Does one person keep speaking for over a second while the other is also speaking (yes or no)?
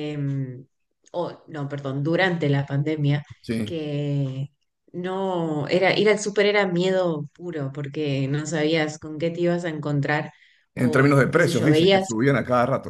yes